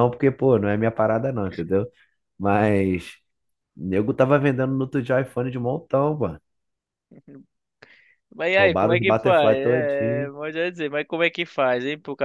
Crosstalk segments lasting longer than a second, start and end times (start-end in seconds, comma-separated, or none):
8.5-10.3